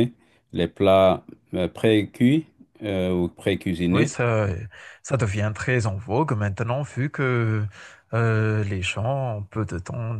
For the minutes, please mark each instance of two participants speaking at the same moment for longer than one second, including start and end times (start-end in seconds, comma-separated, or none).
none